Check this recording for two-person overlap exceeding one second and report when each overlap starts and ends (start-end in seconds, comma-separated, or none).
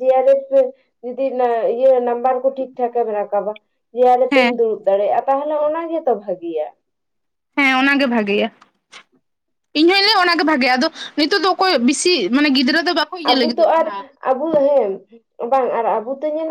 none